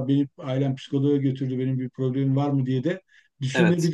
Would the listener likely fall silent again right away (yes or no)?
yes